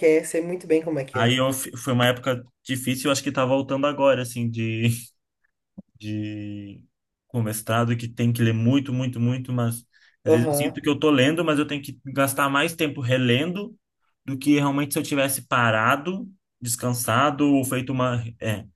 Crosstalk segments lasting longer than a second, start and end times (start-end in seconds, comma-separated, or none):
none